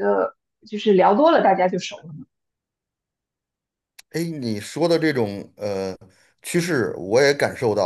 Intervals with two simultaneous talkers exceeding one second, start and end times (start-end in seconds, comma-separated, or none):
none